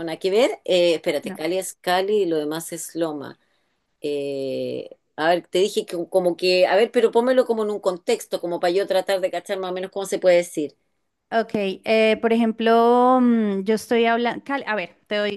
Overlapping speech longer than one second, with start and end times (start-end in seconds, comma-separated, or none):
none